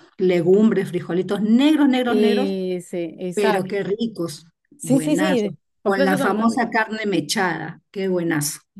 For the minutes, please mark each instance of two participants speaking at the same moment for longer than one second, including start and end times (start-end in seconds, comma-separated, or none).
4.8-6.7